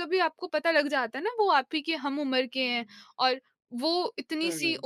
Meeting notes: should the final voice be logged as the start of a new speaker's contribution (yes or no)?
no